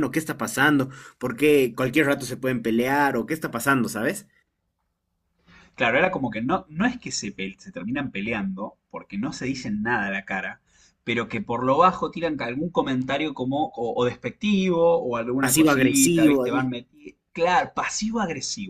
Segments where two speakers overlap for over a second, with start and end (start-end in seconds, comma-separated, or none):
15.4-16.7